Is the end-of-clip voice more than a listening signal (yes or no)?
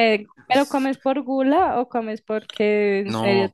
yes